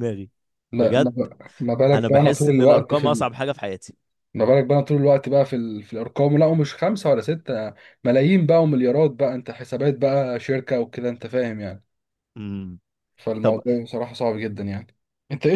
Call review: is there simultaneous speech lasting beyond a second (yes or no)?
yes